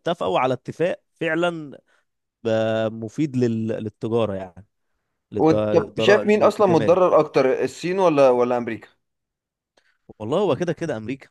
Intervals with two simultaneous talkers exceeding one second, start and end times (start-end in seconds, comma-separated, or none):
5.3-7.0